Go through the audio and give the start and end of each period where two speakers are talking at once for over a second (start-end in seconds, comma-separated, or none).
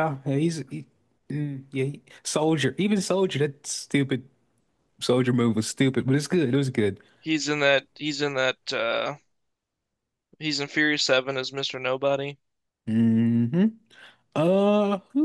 none